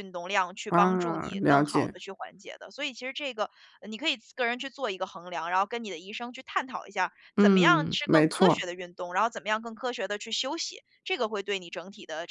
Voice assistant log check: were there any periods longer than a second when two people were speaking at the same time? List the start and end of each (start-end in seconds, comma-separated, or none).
0.7-1.9, 7.3-8.6